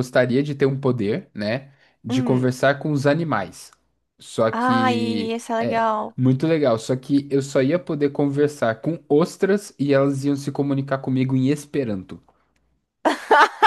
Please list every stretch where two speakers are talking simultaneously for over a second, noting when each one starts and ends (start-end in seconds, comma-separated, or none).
4.5-6.2